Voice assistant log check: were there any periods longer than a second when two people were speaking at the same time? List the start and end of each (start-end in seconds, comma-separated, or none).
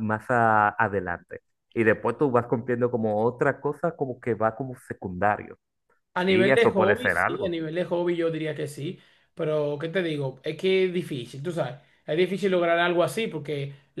6.3-7.6